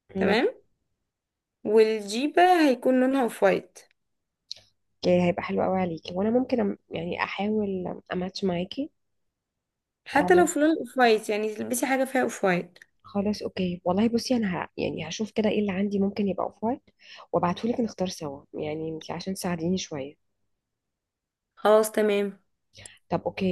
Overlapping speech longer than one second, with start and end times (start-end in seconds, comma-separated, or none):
none